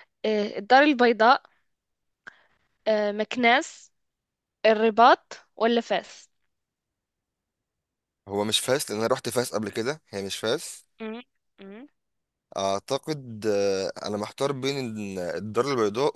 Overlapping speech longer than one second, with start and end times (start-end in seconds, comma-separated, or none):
none